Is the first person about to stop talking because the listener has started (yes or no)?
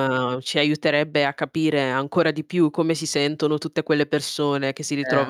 no